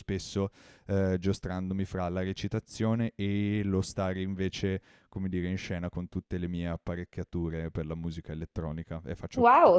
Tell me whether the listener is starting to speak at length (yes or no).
yes